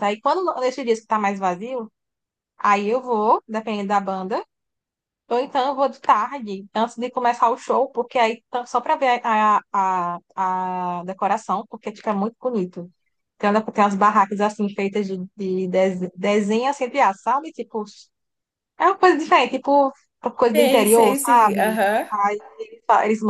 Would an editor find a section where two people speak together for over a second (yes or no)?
yes